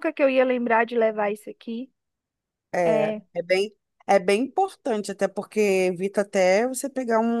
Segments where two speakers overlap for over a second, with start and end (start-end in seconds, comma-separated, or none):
none